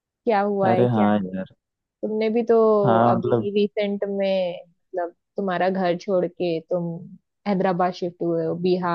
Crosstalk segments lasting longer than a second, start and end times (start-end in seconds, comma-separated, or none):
none